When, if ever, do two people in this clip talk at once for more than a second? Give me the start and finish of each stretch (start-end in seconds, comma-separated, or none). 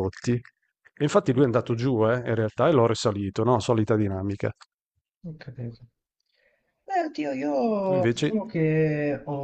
none